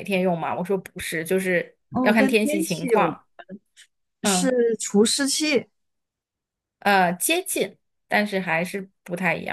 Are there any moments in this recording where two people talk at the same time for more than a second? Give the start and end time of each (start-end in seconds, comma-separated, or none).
1.9-3.2